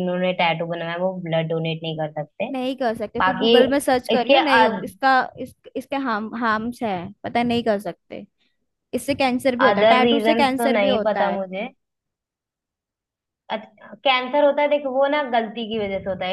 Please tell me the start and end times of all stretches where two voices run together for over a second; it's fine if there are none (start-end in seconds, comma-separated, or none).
9.7-11.4